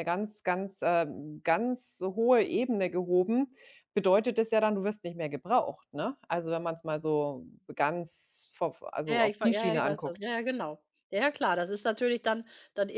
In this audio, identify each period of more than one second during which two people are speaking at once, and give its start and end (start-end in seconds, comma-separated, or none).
9.1-10.3